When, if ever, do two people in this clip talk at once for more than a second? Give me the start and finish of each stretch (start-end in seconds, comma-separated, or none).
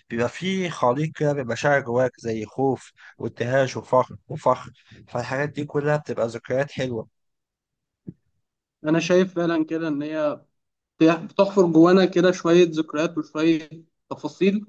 none